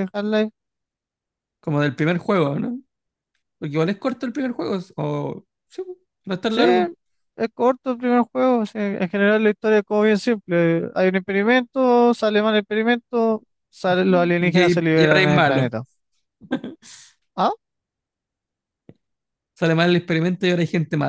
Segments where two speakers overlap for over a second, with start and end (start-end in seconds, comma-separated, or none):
14.4-15.7